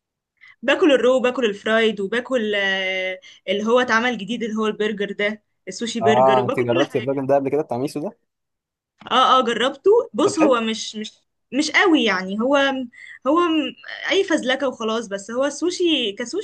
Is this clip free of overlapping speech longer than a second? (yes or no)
no